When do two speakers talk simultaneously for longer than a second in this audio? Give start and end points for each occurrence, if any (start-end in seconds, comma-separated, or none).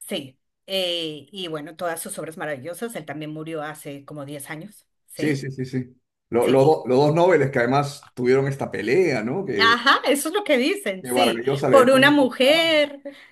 11.0-12.7